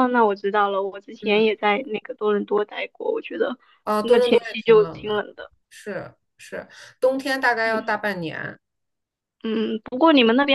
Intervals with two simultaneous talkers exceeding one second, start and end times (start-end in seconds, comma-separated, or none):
4.0-5.2